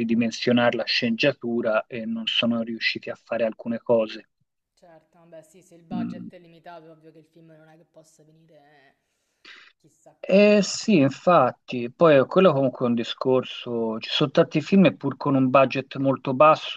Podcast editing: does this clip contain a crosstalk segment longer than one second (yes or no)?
no